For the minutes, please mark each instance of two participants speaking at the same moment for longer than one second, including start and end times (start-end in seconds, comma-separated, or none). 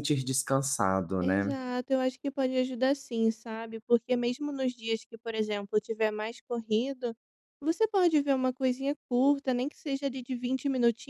none